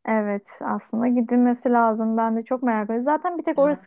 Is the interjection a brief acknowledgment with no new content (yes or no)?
yes